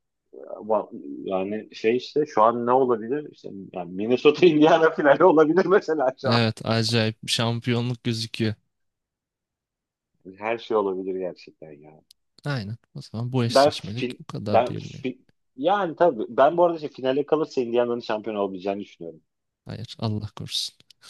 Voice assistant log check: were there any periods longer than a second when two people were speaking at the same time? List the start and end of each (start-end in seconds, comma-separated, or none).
13.5-15.0